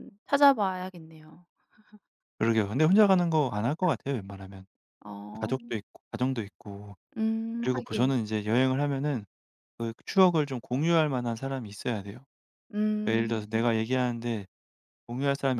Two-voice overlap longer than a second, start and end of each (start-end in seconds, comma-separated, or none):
none